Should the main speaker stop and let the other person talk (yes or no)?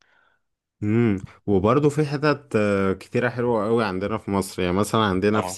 no